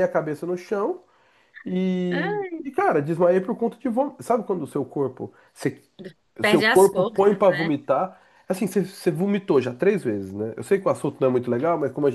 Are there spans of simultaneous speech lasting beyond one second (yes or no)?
yes